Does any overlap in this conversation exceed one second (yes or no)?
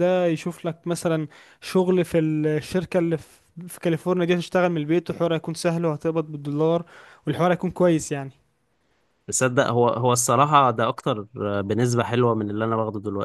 no